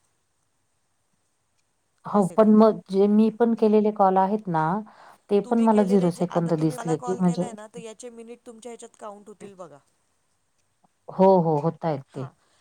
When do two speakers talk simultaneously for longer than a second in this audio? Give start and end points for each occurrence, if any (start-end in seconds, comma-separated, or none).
5.4-7.4